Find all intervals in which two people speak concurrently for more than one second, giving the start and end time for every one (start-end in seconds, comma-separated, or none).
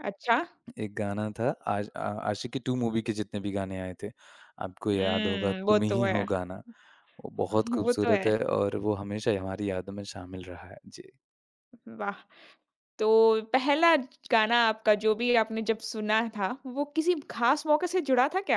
4.9-6.2